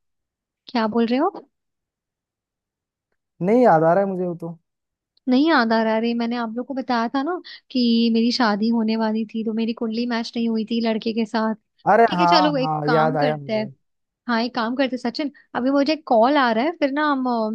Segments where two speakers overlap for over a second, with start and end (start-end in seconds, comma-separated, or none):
12.1-13.7